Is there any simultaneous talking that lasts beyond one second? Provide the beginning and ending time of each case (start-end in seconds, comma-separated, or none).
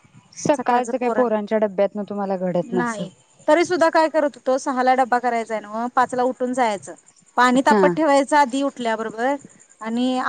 none